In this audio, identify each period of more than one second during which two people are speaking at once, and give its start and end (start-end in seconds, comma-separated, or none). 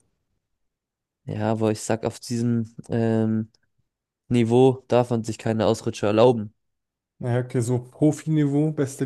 none